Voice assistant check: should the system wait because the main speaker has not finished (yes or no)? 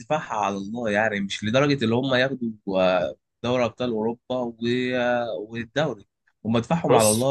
yes